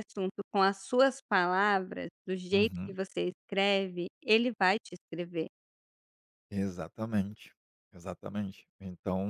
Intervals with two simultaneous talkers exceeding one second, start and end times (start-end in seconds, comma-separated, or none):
none